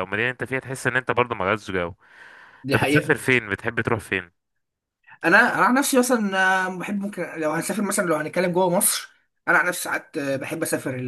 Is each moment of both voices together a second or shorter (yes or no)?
yes